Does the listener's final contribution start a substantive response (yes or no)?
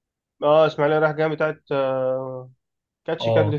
yes